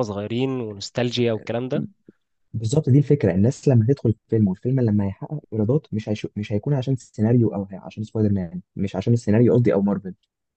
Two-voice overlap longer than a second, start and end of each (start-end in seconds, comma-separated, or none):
none